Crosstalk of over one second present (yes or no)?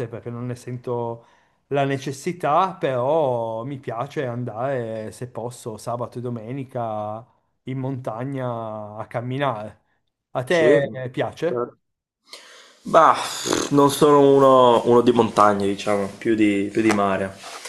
yes